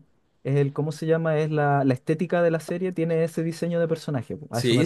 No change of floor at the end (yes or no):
no